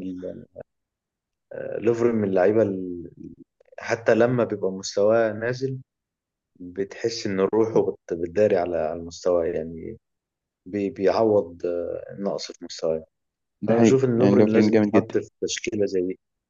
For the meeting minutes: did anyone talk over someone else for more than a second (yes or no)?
yes